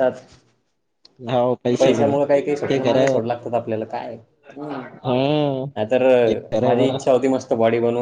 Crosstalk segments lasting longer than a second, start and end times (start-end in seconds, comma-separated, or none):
1.8-3.1